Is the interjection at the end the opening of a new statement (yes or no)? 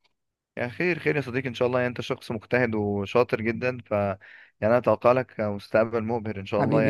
yes